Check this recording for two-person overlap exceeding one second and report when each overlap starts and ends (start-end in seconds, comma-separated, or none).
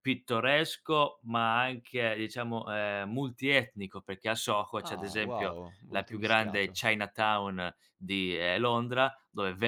4.8-6.8